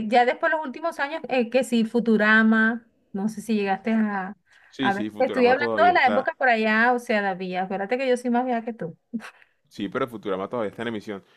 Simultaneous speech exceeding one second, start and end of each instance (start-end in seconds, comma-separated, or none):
4.8-6.3